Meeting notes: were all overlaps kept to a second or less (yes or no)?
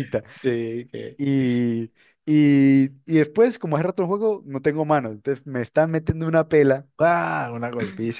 yes